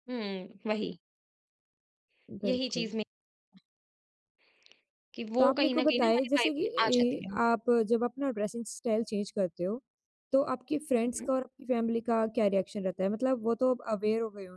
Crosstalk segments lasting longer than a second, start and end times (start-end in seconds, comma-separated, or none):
5.4-7.4